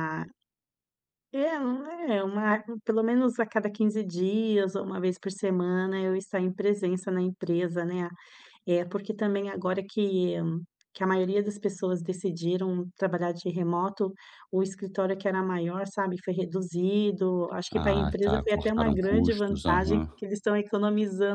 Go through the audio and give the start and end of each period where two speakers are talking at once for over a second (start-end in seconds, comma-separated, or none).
17.7-20.1